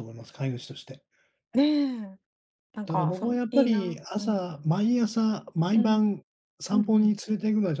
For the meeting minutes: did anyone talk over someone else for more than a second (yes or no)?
yes